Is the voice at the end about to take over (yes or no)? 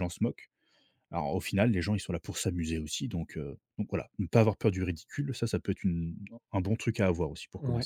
yes